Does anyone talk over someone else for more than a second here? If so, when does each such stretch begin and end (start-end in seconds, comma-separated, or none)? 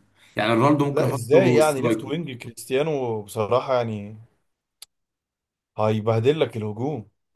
0.9-2.1